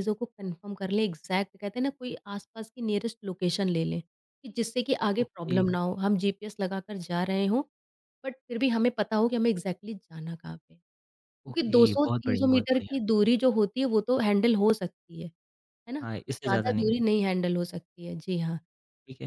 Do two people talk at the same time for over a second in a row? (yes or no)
yes